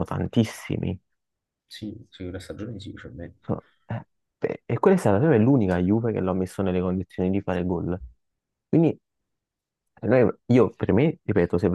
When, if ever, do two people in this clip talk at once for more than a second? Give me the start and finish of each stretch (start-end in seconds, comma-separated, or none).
none